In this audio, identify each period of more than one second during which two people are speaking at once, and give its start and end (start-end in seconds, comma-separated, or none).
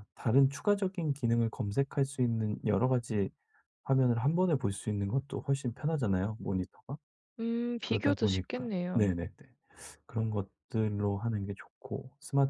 7.8-9.1